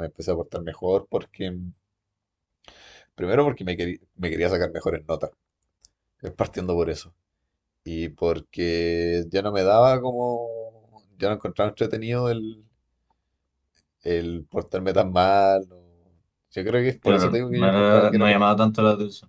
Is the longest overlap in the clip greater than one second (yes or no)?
yes